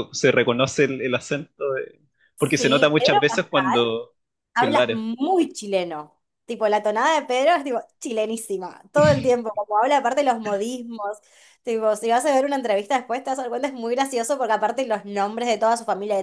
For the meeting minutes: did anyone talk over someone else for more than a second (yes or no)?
yes